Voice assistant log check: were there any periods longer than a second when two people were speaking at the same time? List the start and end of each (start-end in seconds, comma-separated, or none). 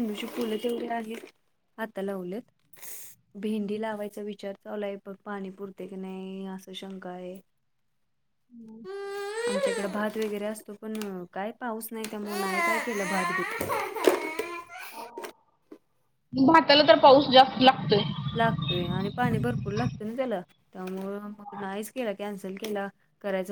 none